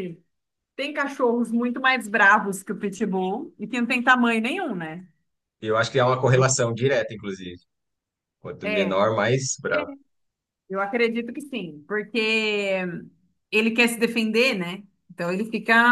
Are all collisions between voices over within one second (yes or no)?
yes